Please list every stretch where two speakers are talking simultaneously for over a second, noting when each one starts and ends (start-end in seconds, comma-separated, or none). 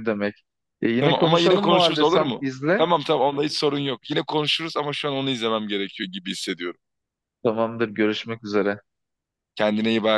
1.0-2.9